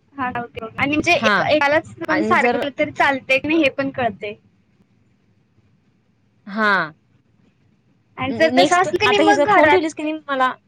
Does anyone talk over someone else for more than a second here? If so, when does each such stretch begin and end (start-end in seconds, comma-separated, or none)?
8.4-9.9